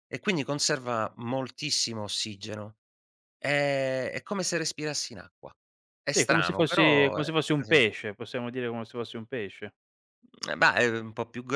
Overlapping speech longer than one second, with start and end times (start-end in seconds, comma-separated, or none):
6.1-7.8